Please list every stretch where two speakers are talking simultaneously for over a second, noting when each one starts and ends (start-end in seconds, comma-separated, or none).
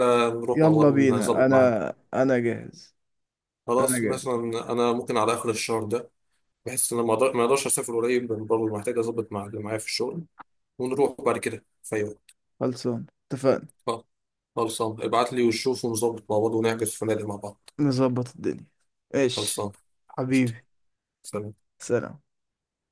0.5-1.8